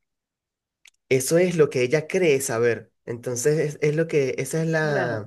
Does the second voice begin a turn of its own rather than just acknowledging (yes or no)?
no